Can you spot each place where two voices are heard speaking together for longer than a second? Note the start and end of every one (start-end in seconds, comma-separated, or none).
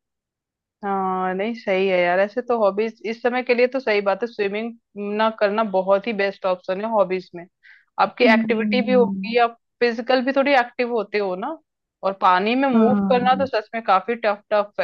8.2-9.4